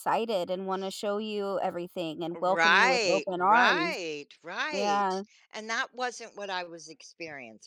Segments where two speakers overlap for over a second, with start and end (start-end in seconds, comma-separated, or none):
2.4-4.0